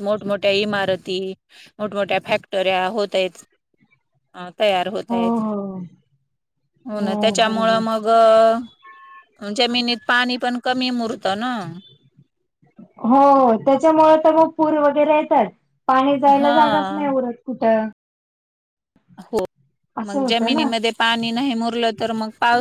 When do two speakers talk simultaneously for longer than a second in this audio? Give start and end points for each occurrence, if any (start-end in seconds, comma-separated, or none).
none